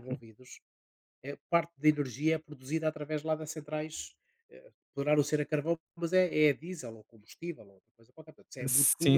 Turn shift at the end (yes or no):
yes